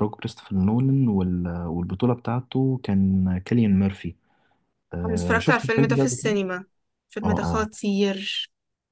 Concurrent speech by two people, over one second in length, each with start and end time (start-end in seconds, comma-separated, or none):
5.0-6.4